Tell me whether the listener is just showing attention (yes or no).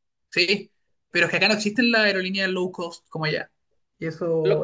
no